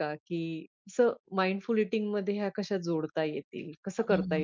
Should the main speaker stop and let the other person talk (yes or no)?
yes